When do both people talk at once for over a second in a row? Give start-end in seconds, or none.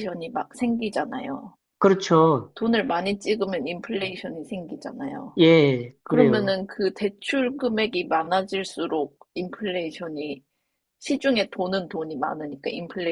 none